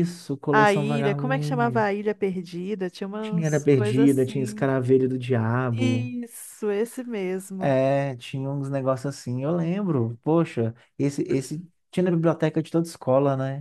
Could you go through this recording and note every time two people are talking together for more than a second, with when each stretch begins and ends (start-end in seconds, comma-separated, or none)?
0.5-1.9, 3.2-4.7